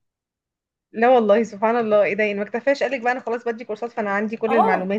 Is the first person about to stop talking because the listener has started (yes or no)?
yes